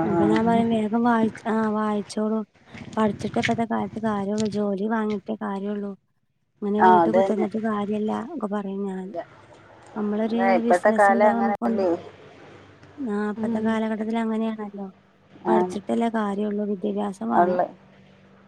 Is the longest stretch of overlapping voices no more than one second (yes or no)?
no